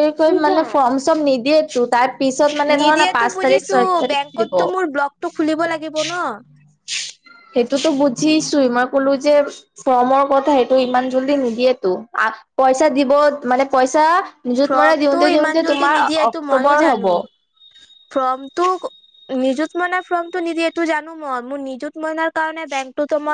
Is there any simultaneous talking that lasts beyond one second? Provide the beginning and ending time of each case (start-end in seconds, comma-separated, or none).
14.7-17.1